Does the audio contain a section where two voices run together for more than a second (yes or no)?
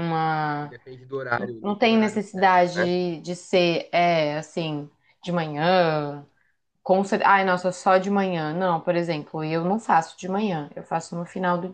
yes